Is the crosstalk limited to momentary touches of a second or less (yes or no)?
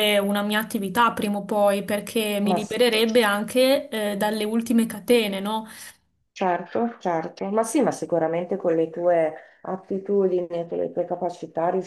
yes